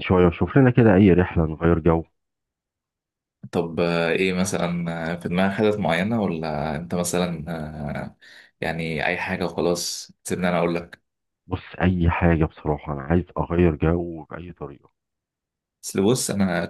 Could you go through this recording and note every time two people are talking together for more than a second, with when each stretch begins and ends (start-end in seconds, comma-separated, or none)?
none